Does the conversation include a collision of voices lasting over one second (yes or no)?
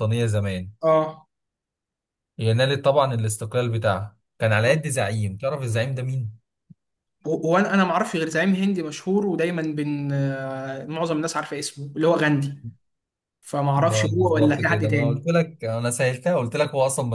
yes